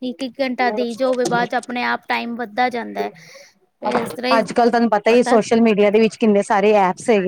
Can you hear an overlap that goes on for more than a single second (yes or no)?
no